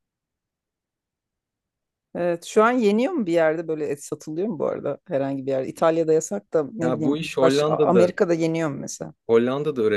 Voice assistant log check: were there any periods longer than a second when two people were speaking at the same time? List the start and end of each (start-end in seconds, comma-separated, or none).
6.8-8.1